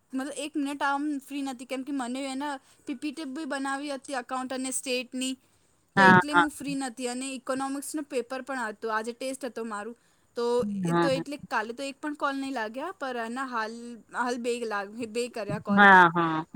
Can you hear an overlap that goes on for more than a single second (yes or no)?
no